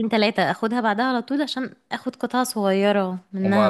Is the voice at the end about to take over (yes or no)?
yes